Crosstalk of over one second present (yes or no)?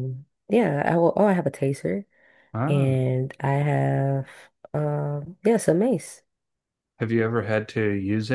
no